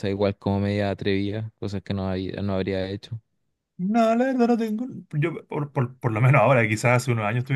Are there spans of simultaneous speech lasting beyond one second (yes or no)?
no